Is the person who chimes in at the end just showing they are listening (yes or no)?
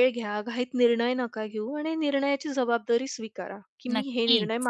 yes